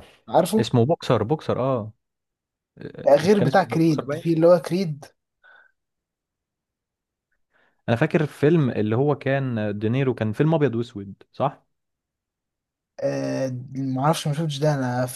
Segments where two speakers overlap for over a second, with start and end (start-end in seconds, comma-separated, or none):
3.0-4.3